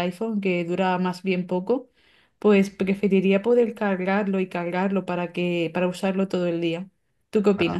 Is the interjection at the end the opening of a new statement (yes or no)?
yes